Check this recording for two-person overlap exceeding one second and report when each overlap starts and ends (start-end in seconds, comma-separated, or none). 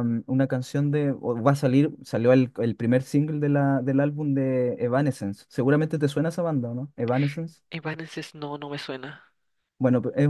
none